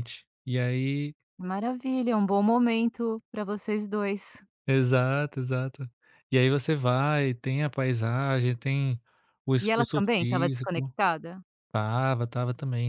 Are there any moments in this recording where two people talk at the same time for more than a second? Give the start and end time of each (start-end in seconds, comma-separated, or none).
9.6-10.9